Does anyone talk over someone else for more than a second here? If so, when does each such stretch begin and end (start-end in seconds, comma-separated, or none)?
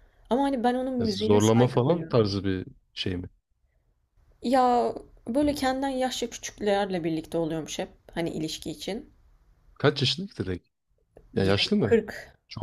1.0-2.3